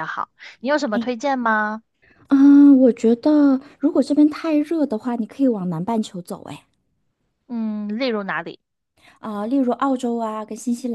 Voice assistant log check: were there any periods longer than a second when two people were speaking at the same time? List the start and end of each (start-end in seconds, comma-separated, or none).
none